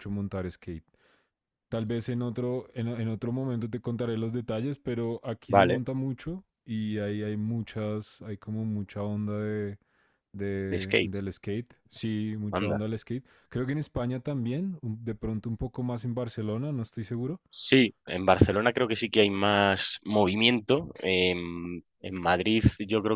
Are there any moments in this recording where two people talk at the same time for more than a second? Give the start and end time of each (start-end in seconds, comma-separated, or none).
none